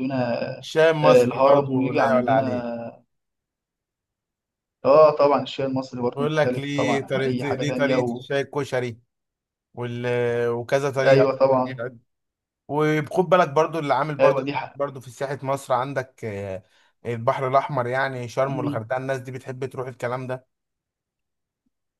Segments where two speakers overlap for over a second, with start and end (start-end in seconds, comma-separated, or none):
1.0-2.7, 6.2-8.2